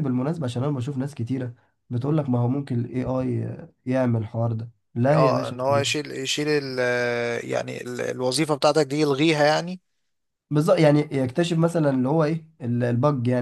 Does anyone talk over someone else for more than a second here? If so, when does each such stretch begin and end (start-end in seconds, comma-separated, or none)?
none